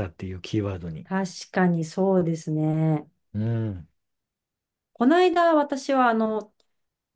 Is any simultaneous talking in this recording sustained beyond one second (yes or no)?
no